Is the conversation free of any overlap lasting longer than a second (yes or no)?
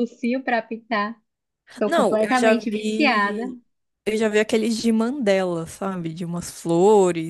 no